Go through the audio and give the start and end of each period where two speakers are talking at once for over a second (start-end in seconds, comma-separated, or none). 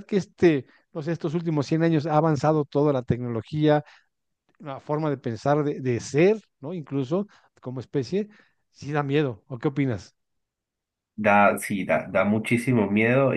none